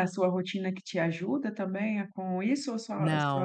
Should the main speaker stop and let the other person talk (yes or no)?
yes